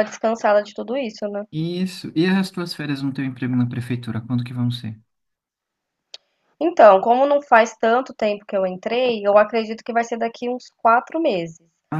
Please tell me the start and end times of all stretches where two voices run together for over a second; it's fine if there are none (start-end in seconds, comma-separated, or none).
none